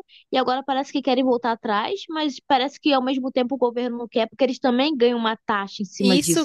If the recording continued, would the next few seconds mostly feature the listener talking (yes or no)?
yes